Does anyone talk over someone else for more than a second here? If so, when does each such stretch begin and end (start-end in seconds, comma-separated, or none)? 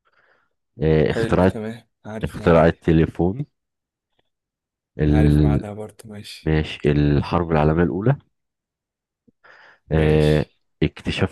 none